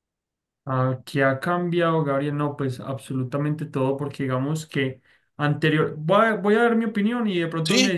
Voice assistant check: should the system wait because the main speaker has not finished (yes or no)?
yes